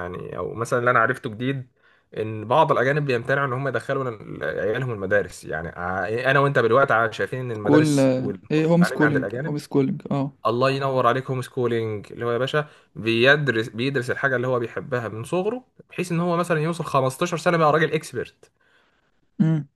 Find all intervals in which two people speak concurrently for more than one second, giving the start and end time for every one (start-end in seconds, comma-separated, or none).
7.6-9.6